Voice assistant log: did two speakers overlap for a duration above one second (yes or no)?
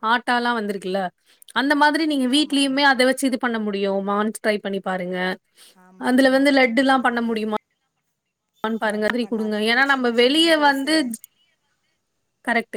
yes